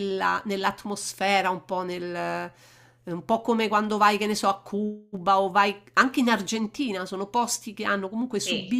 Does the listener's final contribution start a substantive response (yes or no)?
no